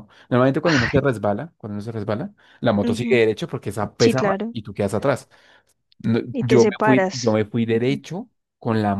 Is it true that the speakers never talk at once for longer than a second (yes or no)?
no